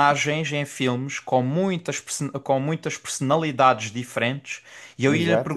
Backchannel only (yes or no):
yes